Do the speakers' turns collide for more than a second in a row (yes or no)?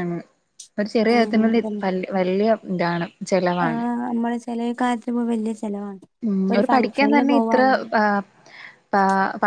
no